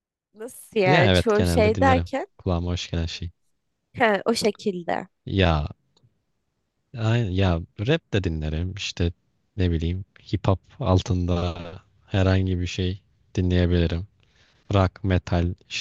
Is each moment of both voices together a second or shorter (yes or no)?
no